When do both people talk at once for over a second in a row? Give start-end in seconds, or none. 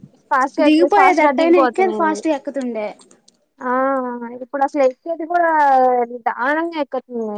0.6-2.2